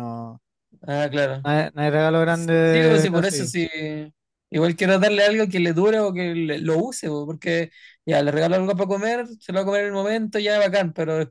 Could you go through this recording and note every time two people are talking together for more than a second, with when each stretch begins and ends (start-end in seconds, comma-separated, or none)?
2.3-3.5